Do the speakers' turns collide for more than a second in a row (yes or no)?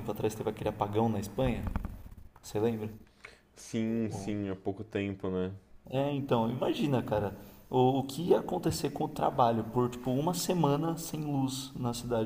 no